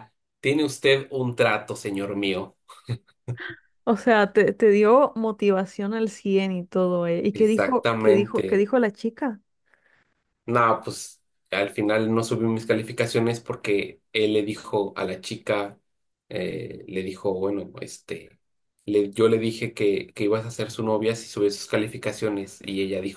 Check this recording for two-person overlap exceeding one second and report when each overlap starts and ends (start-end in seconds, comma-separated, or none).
7.3-8.6